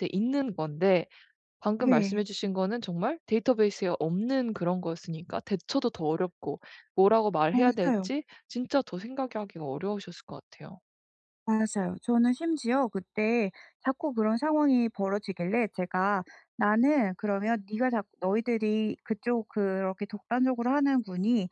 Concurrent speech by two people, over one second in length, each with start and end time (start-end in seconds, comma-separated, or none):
none